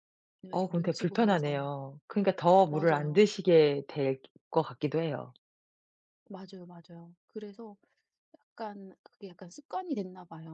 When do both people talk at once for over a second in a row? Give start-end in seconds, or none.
0.5-1.7